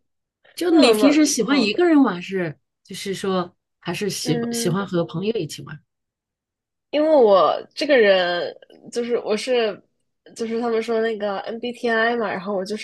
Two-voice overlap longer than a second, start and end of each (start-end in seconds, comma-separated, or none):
0.7-1.9